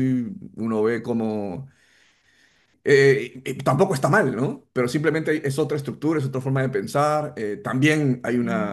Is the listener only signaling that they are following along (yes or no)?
yes